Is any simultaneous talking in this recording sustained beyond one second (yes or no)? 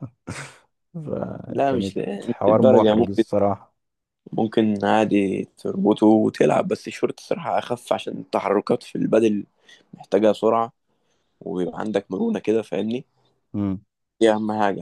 yes